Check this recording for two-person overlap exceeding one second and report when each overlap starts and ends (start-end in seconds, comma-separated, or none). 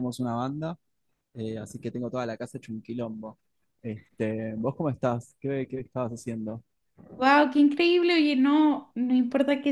none